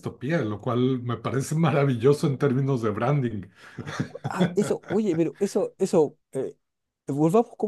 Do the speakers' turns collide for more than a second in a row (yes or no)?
no